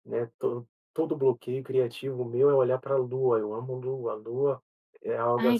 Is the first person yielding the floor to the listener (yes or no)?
yes